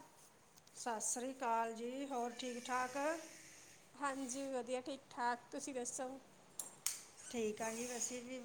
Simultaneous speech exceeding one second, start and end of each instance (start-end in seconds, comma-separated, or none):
none